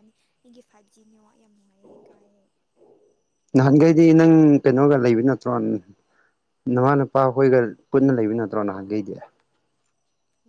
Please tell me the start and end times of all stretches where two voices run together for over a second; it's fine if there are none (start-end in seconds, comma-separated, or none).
none